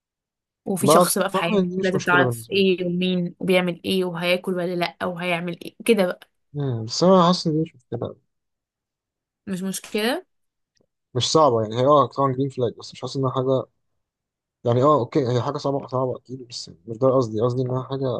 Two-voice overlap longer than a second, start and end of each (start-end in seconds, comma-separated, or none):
0.8-2.6